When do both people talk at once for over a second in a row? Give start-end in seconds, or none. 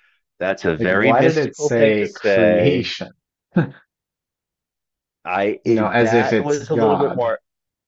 0.8-2.9, 5.7-7.3